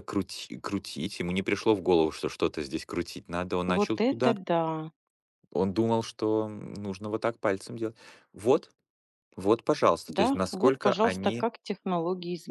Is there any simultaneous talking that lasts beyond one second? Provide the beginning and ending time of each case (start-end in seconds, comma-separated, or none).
10.1-11.5